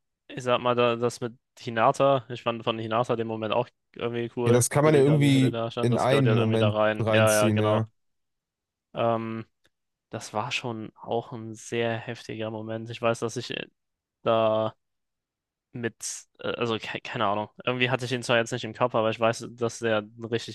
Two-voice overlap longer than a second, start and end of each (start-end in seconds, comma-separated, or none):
4.5-7.8